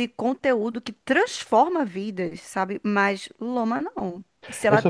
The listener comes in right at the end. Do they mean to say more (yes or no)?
yes